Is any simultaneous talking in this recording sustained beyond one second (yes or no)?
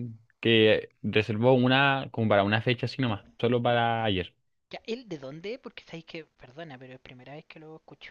no